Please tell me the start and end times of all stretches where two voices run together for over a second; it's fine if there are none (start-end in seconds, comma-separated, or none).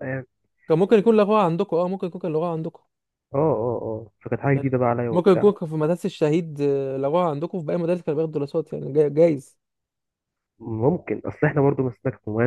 none